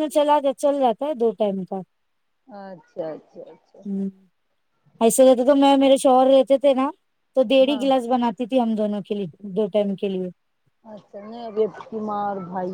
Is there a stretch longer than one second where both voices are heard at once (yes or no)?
no